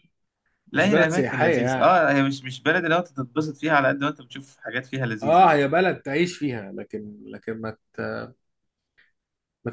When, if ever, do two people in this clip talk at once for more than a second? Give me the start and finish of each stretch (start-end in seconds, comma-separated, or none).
0.7-2.0